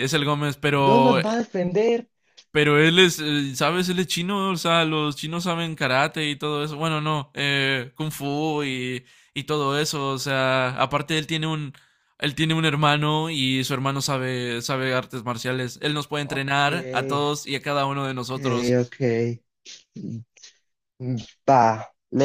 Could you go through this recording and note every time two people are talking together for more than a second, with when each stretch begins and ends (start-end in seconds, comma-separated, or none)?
none